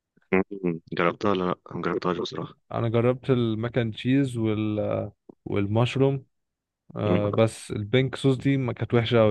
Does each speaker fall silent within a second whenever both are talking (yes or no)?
yes